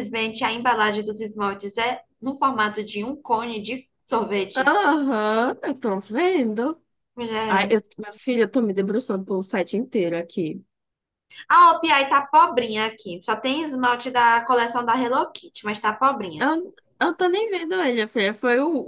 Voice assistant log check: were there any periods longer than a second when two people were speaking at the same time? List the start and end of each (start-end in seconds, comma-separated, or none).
none